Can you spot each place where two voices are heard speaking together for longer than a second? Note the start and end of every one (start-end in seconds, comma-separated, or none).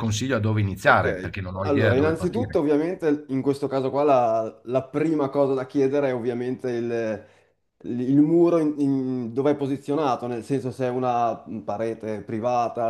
0.9-2.6